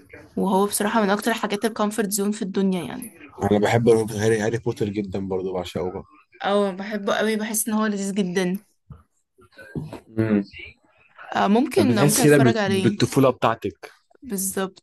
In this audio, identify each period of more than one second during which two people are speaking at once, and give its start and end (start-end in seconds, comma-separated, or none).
11.8-13.0